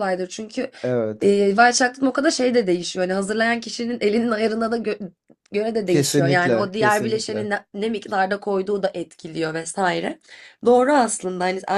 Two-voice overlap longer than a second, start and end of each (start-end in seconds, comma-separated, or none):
5.9-7.5